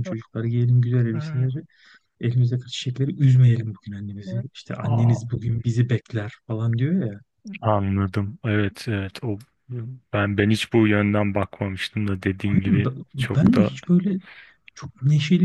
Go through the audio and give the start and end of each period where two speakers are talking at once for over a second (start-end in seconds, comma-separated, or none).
12.4-13.7